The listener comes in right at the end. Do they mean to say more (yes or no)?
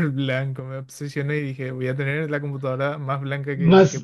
yes